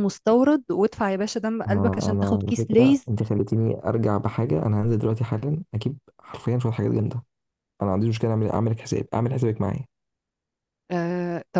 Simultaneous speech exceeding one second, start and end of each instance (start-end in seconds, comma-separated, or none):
1.7-3.1